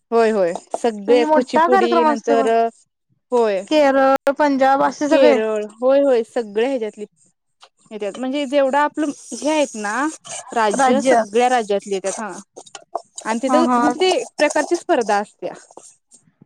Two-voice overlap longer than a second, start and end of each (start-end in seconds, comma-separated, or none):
1.1-2.5